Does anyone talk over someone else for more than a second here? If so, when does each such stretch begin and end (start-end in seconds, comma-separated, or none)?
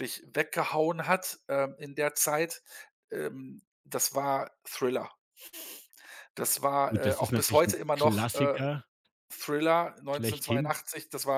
6.9-8.6